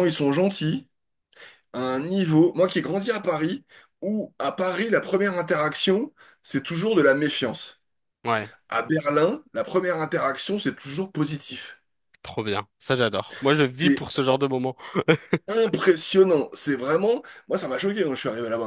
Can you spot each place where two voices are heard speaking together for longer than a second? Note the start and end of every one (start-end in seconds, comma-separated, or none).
none